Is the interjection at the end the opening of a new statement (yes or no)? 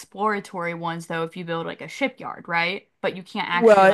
yes